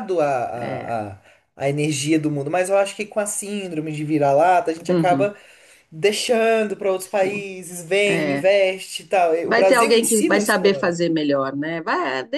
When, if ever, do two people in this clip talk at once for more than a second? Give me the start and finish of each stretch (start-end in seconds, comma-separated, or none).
9.4-11.0